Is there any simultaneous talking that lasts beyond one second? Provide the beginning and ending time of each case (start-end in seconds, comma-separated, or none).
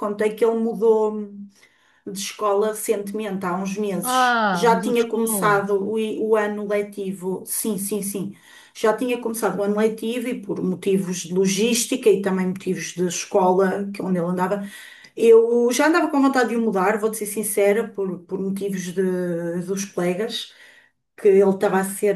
4.0-5.7